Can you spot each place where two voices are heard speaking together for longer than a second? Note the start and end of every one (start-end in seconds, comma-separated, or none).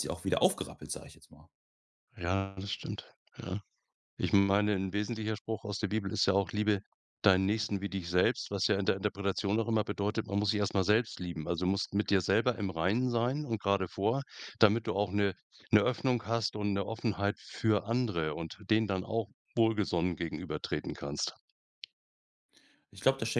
none